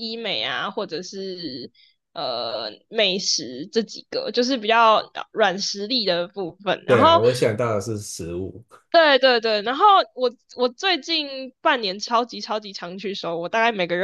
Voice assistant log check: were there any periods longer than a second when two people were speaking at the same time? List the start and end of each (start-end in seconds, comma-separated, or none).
none